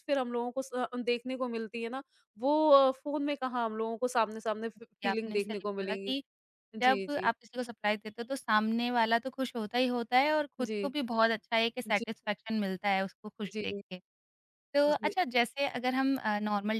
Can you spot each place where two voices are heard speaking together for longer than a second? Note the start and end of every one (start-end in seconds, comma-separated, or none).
4.7-6.2